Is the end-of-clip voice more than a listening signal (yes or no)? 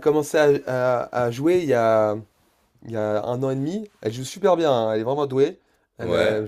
no